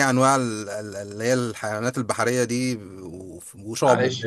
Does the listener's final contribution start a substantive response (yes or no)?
yes